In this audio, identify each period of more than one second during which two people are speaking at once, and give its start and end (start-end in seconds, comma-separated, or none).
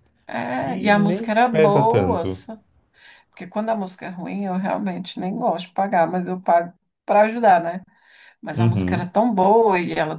0.5-2.2